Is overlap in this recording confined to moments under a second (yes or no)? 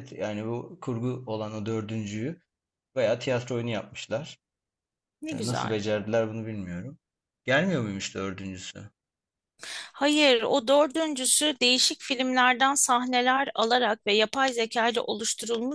yes